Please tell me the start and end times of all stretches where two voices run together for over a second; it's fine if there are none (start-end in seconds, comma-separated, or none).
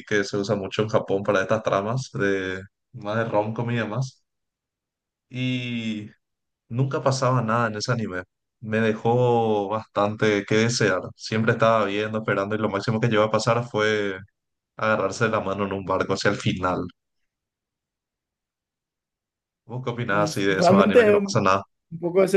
20.1-21.5